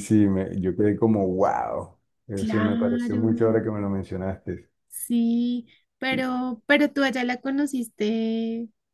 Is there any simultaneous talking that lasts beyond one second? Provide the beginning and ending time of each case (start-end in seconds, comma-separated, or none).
2.3-3.6